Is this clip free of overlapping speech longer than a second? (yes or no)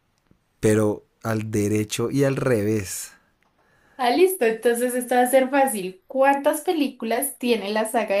yes